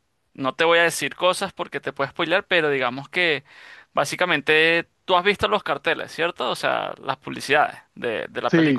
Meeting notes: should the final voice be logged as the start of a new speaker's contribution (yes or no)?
yes